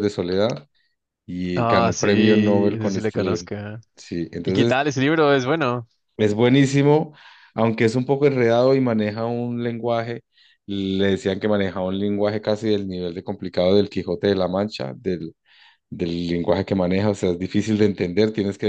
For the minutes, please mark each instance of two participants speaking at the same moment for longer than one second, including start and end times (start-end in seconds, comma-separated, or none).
1.6-3.5